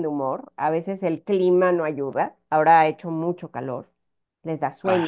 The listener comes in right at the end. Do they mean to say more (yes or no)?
no